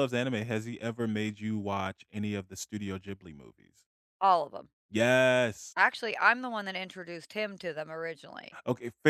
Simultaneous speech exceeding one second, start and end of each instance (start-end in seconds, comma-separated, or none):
none